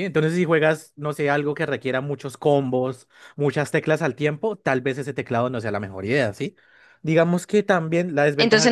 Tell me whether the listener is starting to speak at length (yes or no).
yes